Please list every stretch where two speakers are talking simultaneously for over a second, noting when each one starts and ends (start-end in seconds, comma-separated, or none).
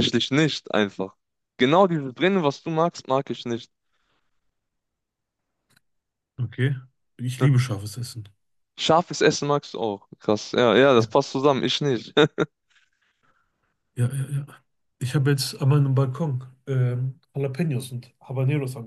none